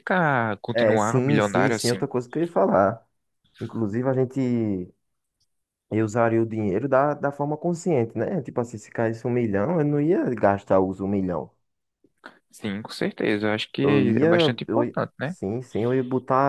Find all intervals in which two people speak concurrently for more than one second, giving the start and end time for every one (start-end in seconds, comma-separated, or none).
0.7-2.0, 13.8-15.4